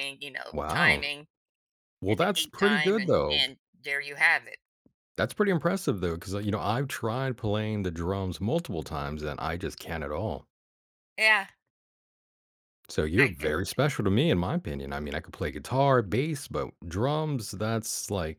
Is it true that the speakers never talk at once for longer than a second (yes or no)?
no